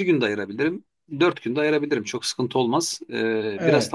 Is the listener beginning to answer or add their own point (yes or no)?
yes